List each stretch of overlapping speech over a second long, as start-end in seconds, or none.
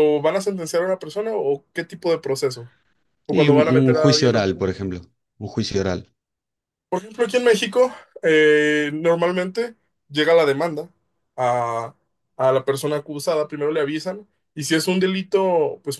3.3-4.8